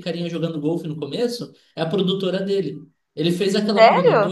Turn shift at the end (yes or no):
no